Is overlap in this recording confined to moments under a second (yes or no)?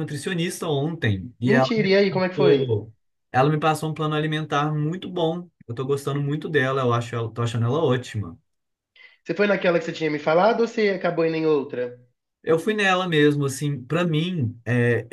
no